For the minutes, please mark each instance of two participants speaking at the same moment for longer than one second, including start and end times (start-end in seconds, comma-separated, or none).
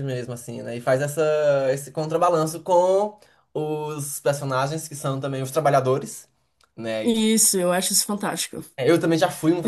none